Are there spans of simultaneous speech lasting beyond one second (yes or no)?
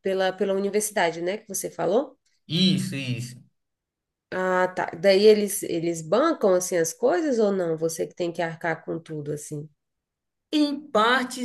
no